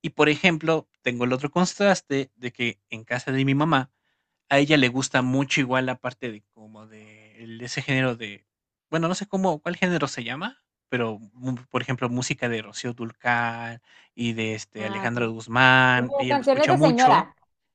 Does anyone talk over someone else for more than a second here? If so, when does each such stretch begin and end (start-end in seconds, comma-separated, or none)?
15.9-17.2